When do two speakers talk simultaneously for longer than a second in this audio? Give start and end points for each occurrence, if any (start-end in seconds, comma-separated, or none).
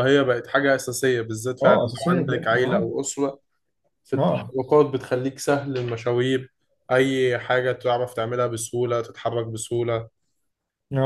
1.6-2.9